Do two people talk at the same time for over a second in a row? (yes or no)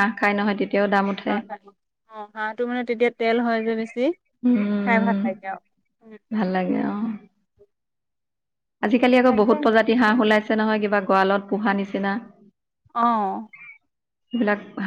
no